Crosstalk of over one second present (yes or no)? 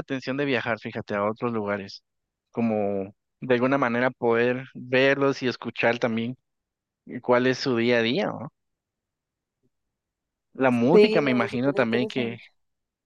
yes